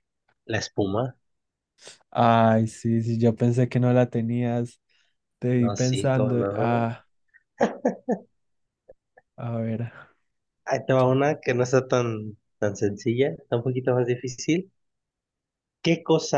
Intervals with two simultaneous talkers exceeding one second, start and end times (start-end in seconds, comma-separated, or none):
5.6-6.9